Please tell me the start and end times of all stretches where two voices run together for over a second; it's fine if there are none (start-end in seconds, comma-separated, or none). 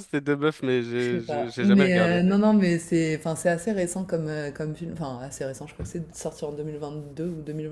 1.0-2.2